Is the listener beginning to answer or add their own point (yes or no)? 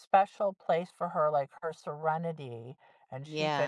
yes